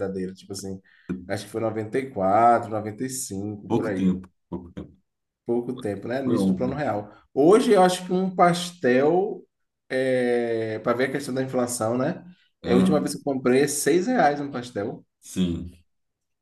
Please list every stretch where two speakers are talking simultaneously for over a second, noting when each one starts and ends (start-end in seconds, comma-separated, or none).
none